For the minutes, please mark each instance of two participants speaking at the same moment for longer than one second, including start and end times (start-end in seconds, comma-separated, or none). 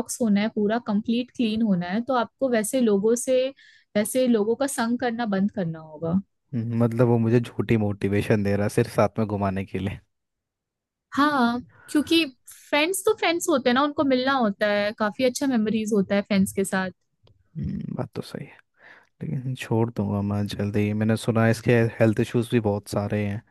none